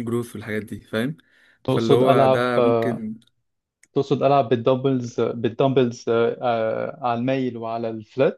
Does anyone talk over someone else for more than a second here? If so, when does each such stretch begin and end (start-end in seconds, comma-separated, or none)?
1.7-3.0